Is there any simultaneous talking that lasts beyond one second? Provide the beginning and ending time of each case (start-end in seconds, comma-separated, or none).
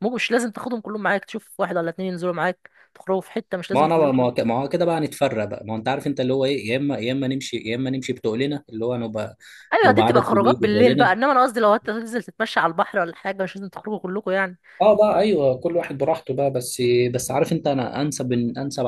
9.9-11.2